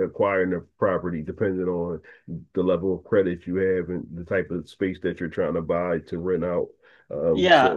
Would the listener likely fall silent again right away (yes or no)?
no